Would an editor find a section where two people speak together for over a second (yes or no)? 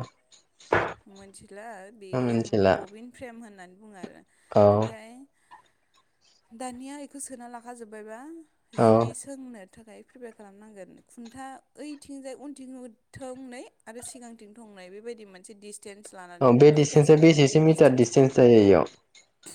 yes